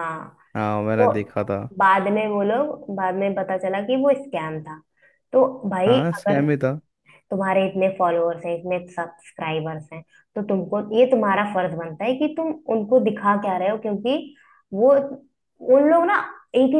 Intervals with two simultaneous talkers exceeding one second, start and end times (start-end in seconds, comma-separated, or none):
none